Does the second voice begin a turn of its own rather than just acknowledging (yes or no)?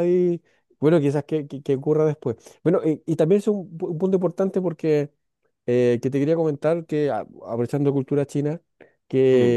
no